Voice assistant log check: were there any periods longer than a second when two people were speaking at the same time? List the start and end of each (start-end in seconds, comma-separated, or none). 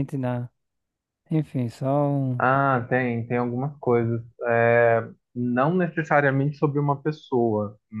none